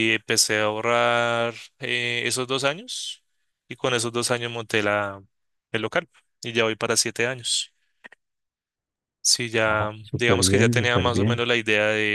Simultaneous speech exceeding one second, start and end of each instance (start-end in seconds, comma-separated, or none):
9.6-11.4